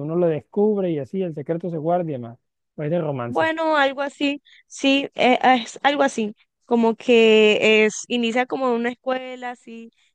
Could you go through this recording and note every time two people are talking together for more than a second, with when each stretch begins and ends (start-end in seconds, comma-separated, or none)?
none